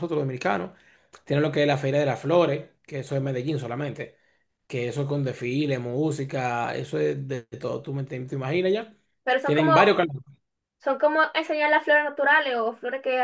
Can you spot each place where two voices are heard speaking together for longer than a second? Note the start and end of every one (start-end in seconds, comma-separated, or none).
none